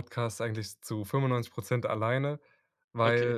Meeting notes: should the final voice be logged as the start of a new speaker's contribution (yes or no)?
no